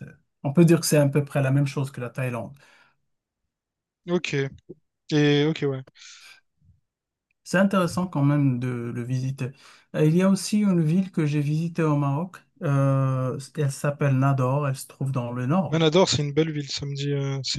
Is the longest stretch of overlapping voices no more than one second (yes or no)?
yes